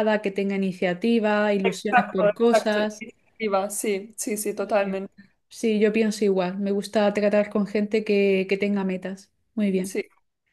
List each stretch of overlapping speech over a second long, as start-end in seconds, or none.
1.6-3.0